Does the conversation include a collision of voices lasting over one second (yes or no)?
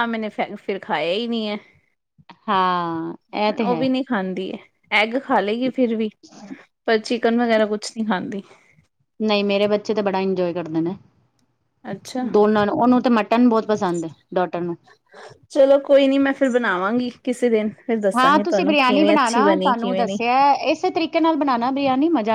yes